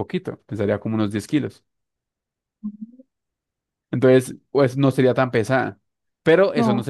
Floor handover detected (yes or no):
no